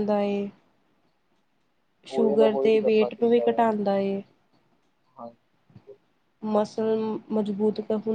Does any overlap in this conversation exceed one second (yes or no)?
yes